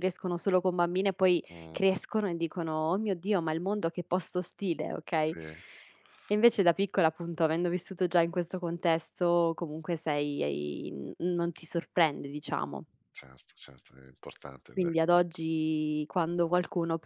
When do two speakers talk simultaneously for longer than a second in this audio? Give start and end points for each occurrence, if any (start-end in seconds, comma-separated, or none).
none